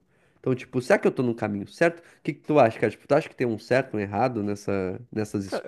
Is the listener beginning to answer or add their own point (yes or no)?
yes